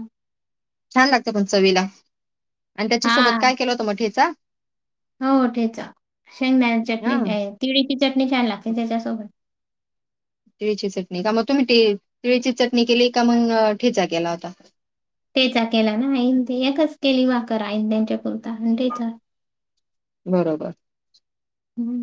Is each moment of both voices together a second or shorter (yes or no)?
yes